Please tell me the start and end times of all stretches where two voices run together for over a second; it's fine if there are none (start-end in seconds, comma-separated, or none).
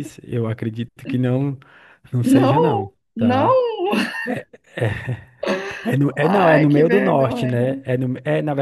2.2-3.5, 6.2-7.8